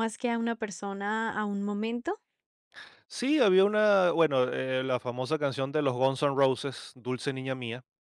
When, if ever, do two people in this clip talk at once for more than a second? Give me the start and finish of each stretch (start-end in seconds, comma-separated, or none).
none